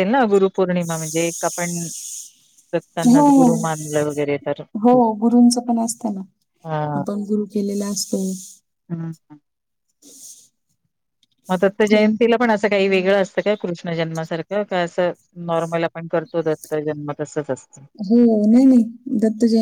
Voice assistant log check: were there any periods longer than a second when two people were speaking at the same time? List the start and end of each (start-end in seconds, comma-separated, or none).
none